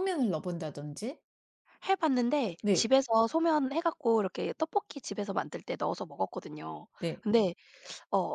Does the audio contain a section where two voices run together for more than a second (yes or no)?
no